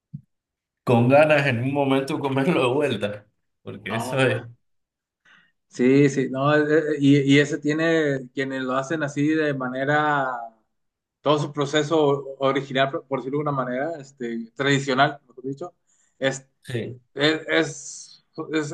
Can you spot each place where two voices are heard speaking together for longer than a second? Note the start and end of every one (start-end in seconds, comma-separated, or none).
none